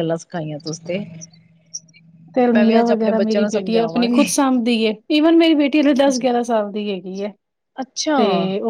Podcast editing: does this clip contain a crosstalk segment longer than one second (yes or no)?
yes